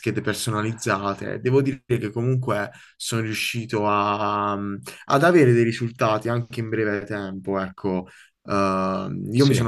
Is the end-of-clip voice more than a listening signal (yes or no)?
no